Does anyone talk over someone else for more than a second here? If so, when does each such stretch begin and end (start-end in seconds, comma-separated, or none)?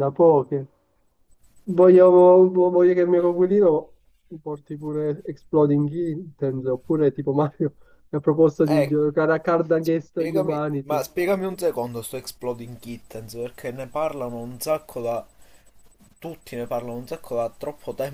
9.8-11.1